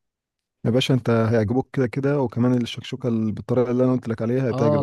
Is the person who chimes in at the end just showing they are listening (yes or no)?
no